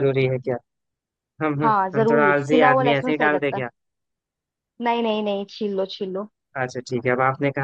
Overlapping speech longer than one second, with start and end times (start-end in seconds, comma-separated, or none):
1.6-3.6